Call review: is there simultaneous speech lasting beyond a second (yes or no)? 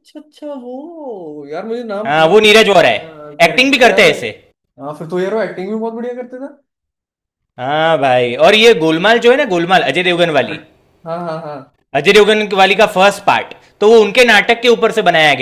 yes